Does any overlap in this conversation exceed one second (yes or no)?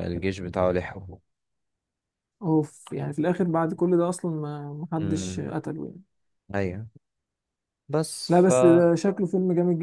no